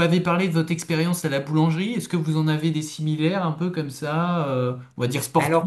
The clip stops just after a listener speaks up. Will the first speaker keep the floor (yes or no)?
no